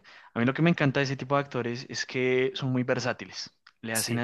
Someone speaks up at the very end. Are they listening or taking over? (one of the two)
listening